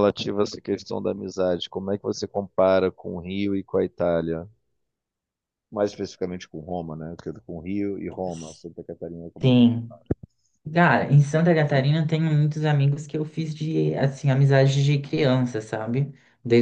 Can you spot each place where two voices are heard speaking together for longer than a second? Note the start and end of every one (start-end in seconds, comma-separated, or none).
none